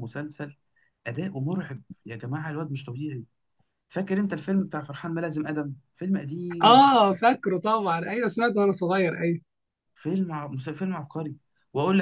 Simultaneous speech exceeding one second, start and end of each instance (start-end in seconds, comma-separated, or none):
none